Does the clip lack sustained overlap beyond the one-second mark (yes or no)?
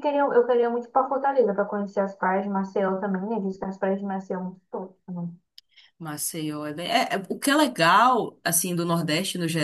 yes